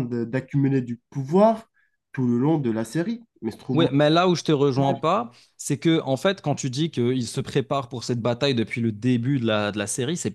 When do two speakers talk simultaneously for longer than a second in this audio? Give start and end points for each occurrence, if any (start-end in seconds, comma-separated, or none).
none